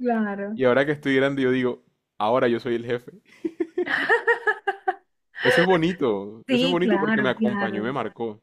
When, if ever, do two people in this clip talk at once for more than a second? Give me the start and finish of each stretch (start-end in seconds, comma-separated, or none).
6.5-7.9